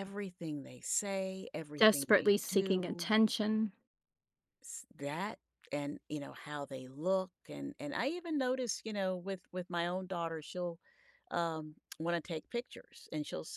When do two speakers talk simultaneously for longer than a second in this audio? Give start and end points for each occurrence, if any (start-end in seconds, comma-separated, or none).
1.8-3.1